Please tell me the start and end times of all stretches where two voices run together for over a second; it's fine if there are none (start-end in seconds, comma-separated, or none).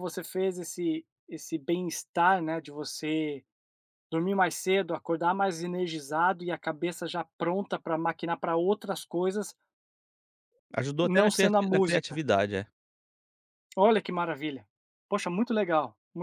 11.0-12.2